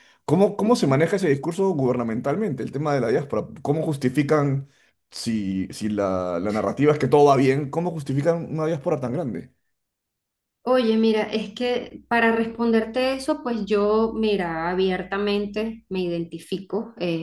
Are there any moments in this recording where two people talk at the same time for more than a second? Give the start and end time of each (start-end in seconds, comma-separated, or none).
none